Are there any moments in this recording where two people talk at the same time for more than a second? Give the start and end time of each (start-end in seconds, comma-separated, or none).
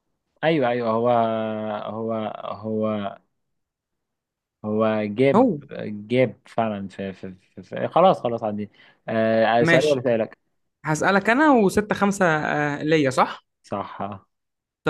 none